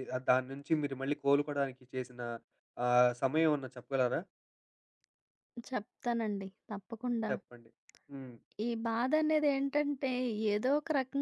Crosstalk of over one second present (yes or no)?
no